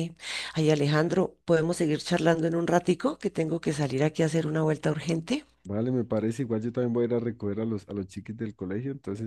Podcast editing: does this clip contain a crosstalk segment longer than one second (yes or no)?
no